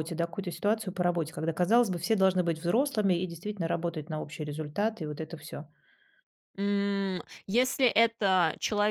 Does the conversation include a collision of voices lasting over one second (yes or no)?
no